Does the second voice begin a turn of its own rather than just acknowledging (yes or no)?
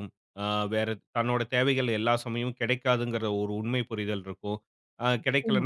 no